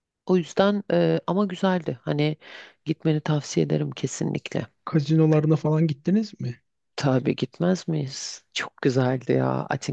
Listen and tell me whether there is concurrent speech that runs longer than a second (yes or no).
no